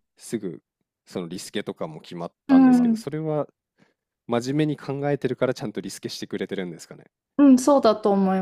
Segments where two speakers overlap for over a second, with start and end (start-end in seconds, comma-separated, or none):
none